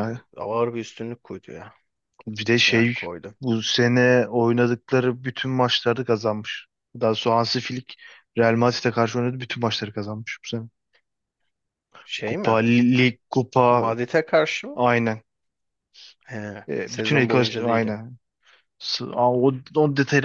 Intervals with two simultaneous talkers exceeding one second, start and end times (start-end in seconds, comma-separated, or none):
16.7-18.0